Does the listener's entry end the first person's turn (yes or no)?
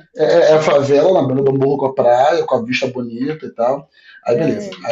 no